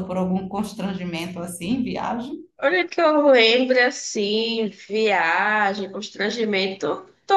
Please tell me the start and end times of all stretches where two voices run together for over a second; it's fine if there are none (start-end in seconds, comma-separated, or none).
none